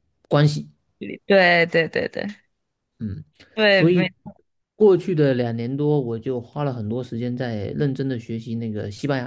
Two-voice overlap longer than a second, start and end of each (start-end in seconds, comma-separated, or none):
none